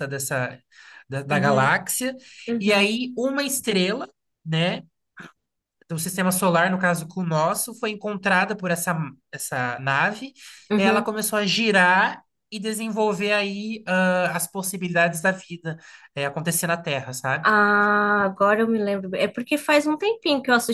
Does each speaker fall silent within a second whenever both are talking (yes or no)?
yes